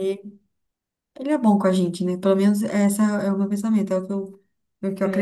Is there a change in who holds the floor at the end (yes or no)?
yes